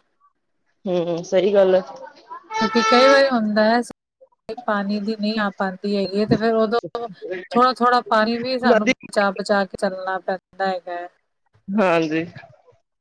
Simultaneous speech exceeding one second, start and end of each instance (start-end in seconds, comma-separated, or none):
none